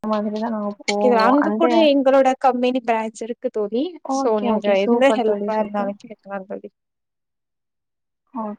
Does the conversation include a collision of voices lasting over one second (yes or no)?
yes